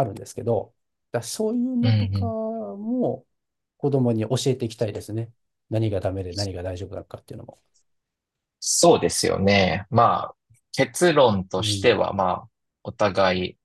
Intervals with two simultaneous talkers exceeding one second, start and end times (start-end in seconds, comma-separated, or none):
none